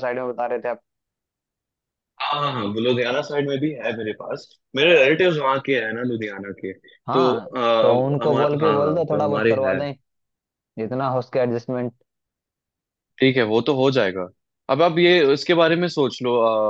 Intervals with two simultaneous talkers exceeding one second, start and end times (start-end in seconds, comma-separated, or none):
7.1-9.8